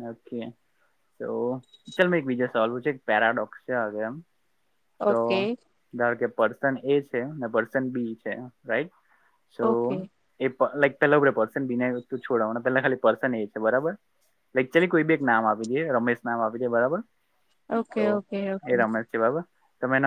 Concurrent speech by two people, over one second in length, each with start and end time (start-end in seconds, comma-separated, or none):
none